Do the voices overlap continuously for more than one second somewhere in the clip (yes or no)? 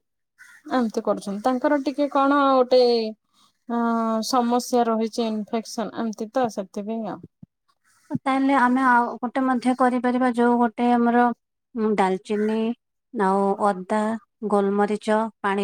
no